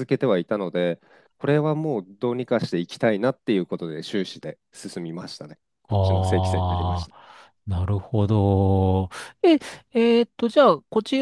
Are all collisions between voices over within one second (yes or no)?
no